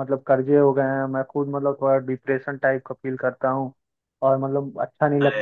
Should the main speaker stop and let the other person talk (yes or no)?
no